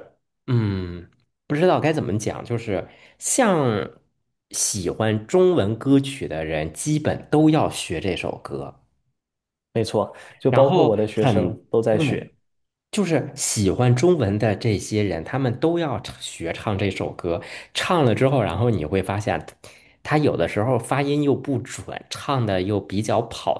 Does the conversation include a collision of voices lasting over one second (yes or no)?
yes